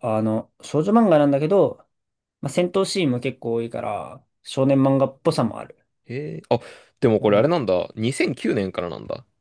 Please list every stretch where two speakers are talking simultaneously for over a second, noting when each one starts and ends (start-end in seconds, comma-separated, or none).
none